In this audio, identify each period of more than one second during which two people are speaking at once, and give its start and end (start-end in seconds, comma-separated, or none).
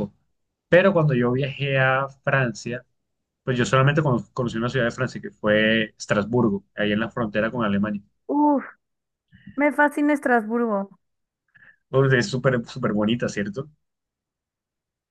none